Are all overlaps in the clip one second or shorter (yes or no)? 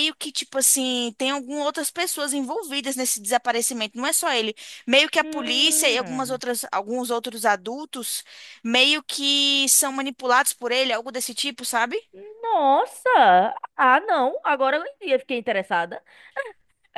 no